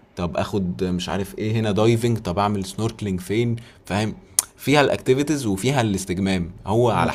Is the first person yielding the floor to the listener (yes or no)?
no